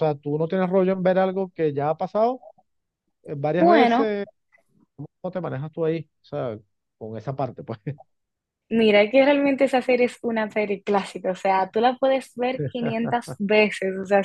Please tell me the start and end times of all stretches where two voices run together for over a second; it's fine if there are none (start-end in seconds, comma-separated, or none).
none